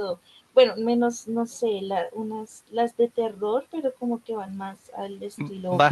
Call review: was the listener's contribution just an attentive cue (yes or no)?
no